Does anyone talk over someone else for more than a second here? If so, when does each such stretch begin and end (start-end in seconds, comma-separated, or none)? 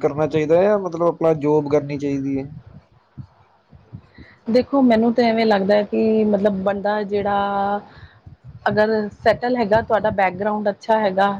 none